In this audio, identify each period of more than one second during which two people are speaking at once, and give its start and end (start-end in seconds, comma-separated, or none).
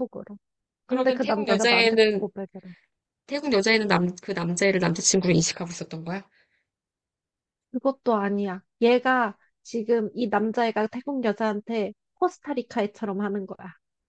0.9-2.2